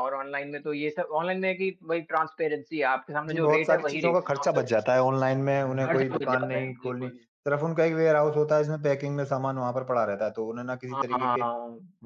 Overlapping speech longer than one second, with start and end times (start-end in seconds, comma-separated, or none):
3.3-4.6, 5.8-7.2